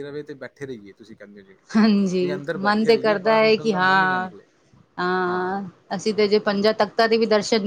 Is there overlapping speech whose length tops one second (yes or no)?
yes